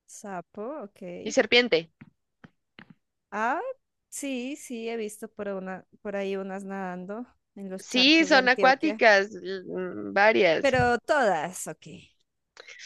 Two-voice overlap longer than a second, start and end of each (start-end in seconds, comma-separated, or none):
7.8-9.0